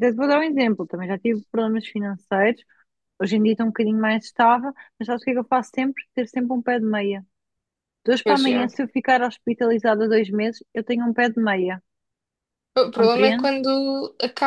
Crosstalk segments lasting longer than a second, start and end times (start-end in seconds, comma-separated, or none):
none